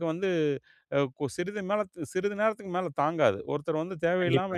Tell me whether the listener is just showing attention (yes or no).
yes